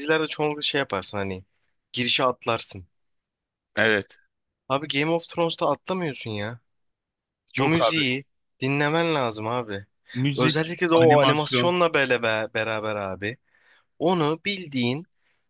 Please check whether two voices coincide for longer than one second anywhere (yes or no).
yes